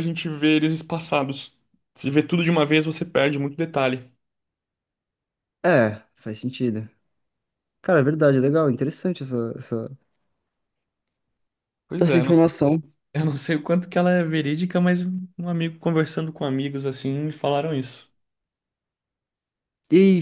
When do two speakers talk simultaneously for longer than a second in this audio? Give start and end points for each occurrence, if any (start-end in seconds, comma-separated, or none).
none